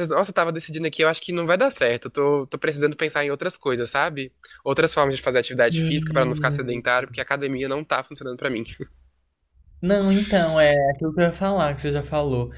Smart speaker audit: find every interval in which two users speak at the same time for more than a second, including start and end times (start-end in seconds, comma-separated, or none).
5.7-6.9